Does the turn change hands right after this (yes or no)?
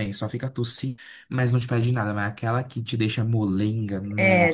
yes